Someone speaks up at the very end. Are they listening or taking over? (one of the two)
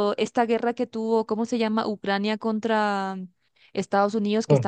listening